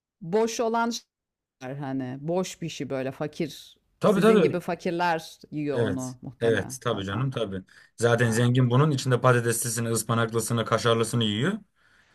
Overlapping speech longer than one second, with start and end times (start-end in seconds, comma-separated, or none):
5.7-7.3